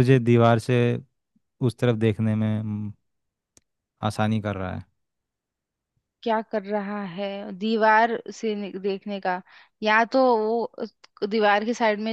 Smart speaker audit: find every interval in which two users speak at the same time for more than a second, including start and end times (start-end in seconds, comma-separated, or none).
none